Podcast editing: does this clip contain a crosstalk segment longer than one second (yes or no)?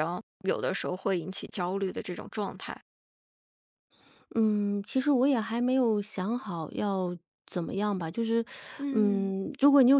no